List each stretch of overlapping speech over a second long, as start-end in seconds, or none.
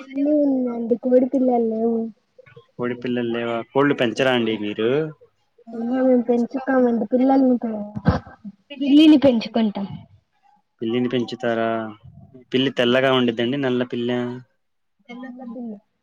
none